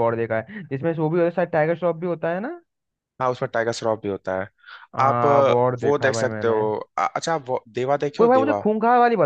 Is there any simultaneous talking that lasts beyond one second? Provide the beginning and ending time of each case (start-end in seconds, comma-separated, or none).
5.0-6.6